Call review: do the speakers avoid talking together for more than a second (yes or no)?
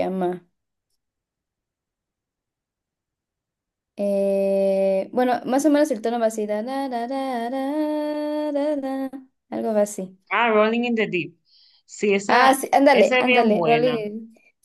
no